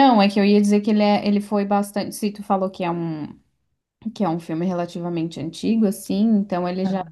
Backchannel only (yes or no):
yes